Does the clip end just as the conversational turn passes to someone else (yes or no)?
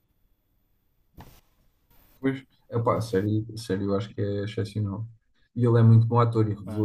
no